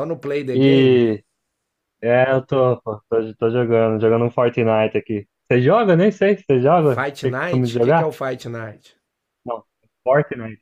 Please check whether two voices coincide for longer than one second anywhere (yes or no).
yes